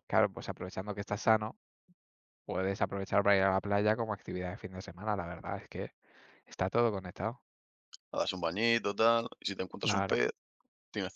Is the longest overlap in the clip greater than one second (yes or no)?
no